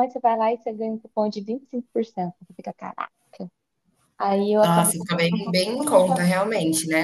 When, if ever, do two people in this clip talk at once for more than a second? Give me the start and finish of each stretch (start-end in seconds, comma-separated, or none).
4.6-6.4